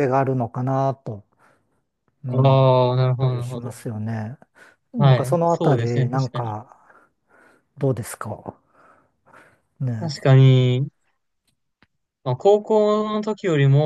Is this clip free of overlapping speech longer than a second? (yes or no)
no